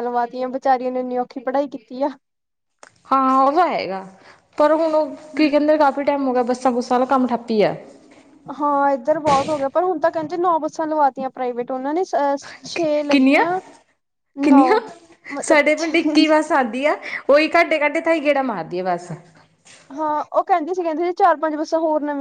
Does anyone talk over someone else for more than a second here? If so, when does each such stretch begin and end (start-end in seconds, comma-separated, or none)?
none